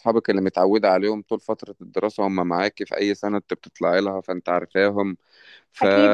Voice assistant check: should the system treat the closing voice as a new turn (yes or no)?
yes